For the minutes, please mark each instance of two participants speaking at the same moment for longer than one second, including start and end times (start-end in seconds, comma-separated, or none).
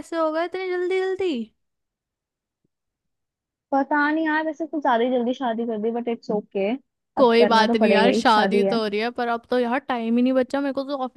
7.2-8.8